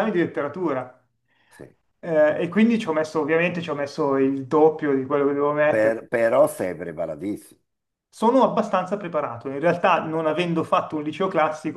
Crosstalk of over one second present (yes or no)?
no